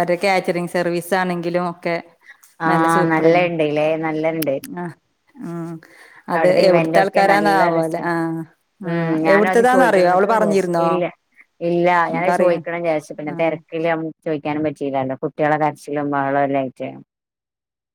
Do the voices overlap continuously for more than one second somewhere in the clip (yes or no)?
yes